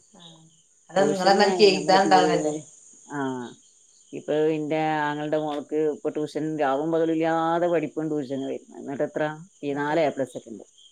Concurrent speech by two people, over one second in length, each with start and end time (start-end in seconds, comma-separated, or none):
1.0-2.3